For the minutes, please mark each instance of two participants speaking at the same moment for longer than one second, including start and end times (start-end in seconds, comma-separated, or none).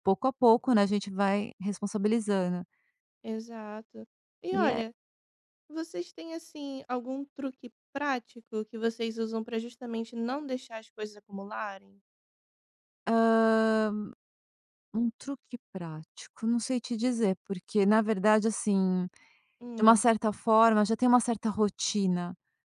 none